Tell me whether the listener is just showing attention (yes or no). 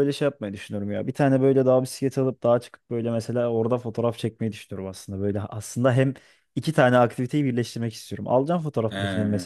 yes